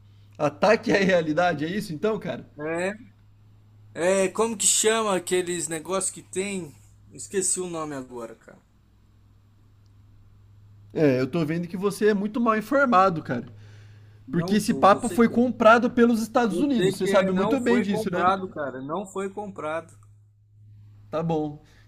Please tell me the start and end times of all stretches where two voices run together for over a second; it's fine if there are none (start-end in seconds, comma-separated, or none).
14.3-15.5, 16.5-18.3